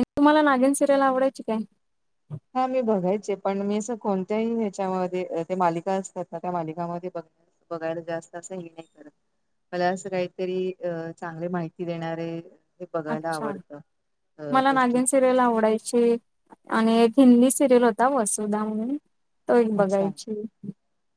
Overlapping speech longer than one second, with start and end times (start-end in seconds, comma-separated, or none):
none